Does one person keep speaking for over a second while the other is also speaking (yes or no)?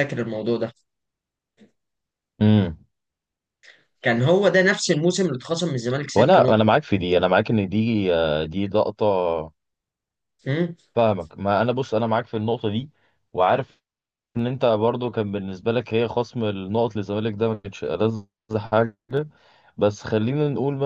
no